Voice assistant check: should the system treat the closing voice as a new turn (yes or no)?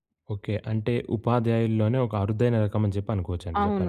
yes